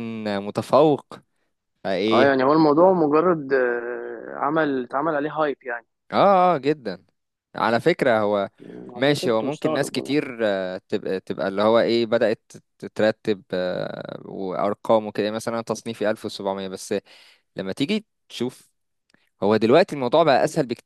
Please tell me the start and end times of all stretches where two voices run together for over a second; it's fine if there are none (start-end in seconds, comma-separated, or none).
8.9-10.2